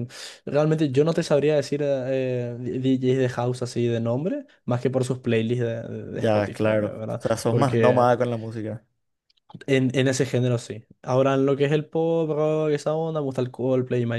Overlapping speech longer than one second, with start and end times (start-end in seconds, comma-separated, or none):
6.1-8.1